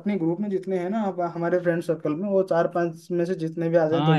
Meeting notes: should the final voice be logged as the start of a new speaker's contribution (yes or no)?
yes